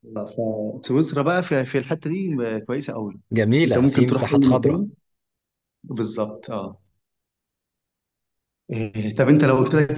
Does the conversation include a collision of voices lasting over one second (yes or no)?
yes